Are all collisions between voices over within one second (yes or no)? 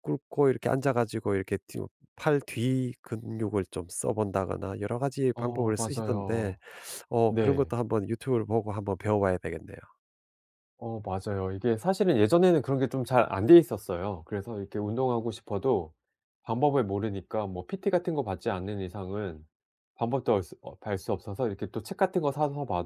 no